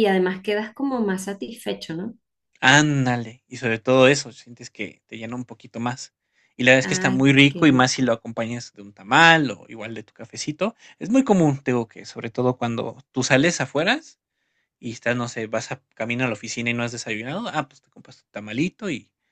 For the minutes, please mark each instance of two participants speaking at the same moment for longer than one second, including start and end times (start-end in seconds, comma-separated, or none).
6.8-8.2